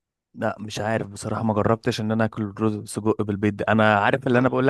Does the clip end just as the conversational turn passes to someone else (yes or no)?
no